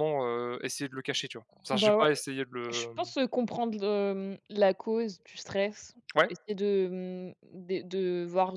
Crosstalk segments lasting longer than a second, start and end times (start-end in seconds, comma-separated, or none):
none